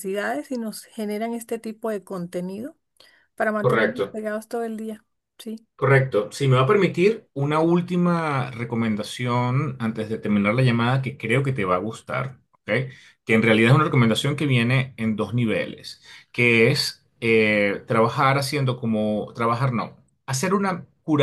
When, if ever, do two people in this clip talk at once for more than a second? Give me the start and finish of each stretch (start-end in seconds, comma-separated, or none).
none